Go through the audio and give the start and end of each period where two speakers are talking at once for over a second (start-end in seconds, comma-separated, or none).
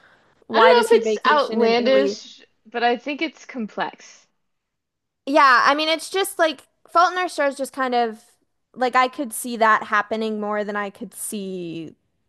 0.5-2.2